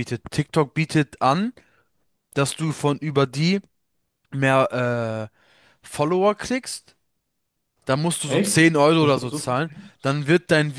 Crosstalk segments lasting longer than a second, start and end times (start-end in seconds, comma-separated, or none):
8.2-9.9